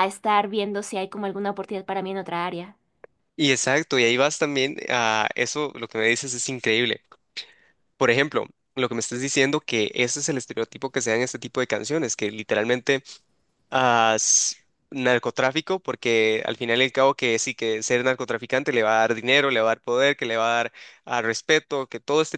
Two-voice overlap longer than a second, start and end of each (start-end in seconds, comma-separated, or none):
none